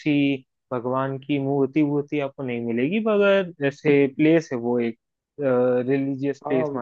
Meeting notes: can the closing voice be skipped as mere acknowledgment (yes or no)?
no